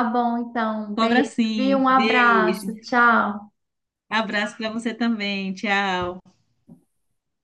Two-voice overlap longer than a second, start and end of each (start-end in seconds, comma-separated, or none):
1.0-2.7